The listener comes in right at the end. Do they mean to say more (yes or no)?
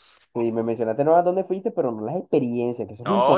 yes